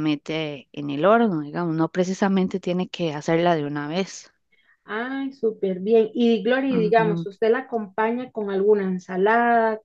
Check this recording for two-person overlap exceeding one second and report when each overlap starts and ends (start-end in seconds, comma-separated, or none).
none